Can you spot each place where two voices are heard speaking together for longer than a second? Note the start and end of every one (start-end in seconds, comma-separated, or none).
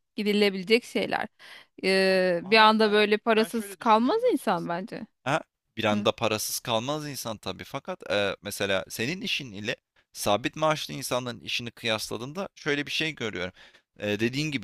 2.0-4.7